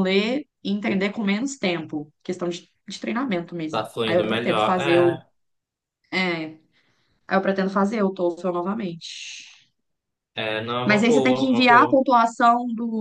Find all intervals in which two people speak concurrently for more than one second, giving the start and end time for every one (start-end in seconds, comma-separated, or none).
3.7-5.0, 10.8-12.0